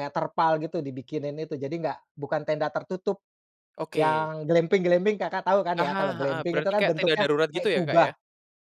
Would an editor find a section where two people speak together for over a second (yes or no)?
yes